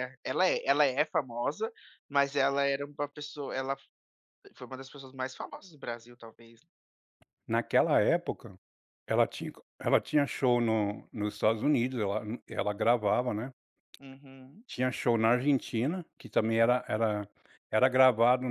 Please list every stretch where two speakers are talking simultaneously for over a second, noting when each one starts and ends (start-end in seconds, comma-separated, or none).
none